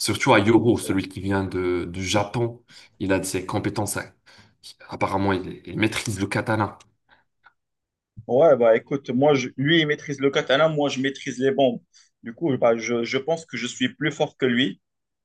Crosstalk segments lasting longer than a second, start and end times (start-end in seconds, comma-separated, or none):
none